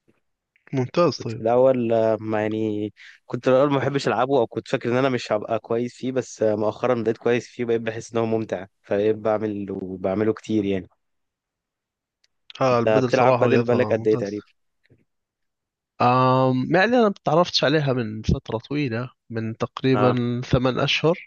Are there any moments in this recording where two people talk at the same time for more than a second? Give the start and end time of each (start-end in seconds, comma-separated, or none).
12.7-14.5